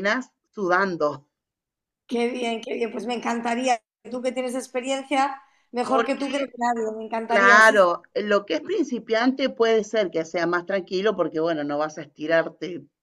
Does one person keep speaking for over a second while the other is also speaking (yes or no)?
no